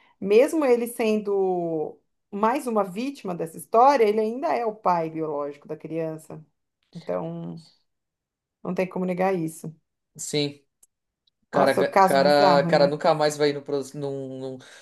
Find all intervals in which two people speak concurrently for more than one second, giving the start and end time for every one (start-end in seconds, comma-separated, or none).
11.5-12.9